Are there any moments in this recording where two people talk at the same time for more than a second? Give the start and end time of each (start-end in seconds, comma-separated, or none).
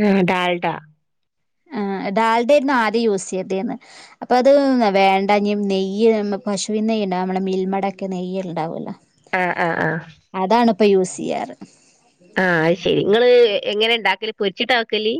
none